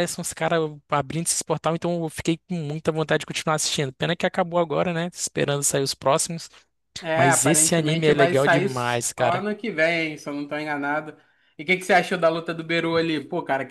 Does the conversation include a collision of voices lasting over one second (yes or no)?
yes